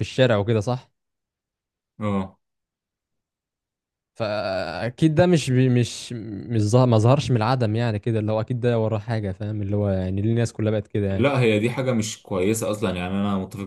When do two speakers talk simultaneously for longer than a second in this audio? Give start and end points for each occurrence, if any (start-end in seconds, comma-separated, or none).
none